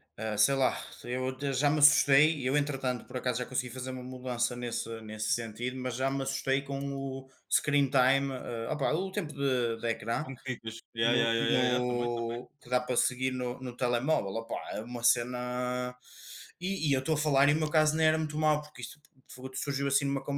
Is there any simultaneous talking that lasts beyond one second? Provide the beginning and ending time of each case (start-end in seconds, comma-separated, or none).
11.0-12.4